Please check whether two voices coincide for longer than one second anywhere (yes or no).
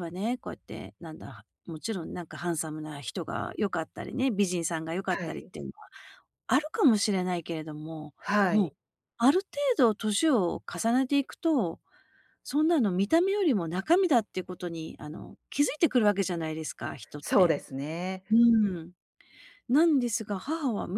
no